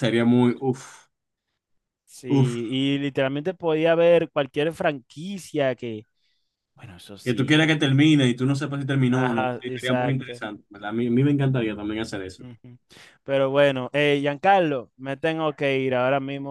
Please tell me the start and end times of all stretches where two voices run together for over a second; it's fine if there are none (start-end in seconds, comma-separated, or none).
9.1-10.4